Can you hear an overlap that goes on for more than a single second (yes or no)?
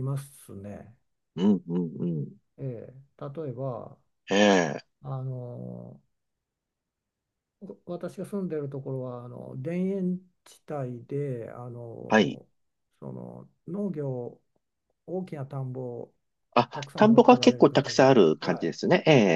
yes